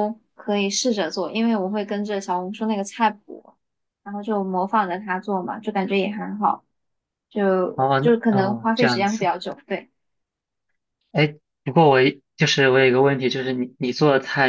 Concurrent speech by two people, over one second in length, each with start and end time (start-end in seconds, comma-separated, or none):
7.7-9.3